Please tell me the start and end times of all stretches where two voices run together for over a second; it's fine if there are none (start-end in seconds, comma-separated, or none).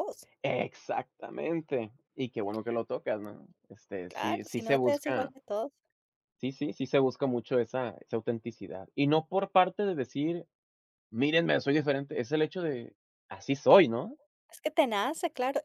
4.1-5.3